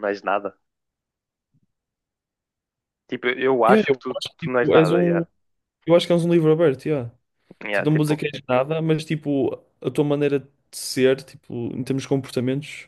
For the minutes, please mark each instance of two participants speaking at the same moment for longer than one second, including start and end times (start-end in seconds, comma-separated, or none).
3.7-5.2